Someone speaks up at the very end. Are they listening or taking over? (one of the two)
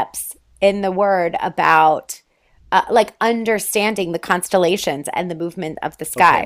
taking over